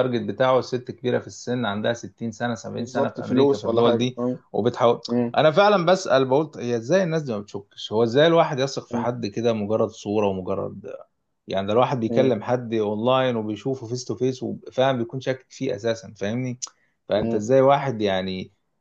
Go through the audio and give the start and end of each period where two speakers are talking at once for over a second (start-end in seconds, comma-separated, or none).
2.8-4.2